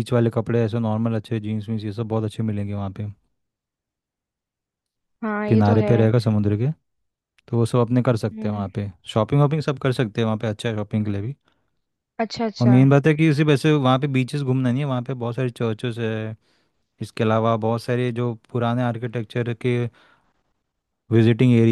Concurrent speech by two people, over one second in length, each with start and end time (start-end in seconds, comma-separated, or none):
none